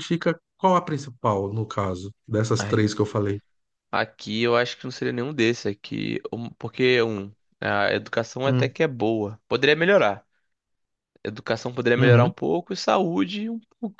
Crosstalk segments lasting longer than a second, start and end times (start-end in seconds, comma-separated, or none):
none